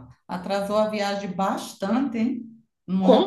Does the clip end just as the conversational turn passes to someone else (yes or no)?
yes